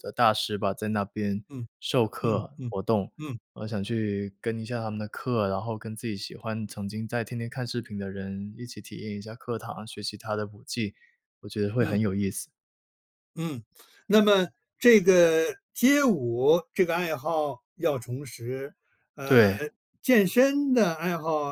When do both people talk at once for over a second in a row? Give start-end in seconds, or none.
none